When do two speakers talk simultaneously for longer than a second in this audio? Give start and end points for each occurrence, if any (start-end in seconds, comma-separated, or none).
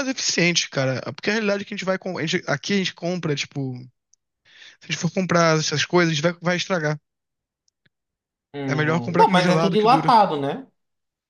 8.7-10.1